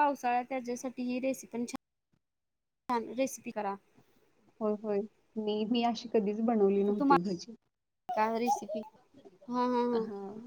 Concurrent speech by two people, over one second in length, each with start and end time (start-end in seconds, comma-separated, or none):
none